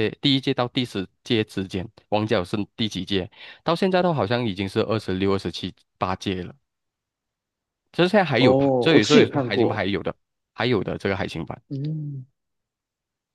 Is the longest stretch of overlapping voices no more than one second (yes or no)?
no